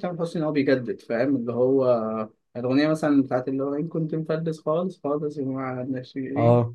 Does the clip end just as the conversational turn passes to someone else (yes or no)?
yes